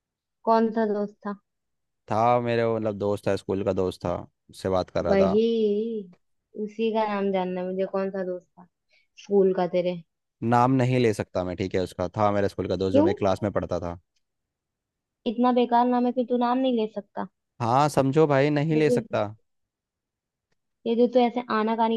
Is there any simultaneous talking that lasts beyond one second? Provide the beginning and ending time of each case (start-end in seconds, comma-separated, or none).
none